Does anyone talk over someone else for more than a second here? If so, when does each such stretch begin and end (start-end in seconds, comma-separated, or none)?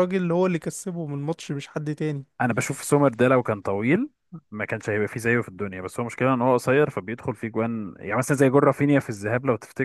none